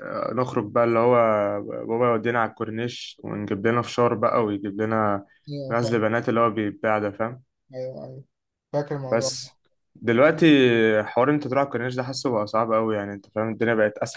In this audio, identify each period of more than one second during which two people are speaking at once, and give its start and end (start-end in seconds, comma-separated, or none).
none